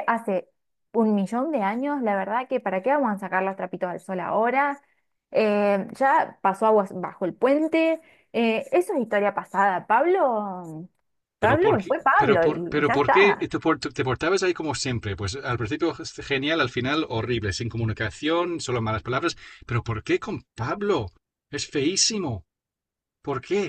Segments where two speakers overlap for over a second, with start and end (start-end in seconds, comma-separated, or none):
11.4-13.5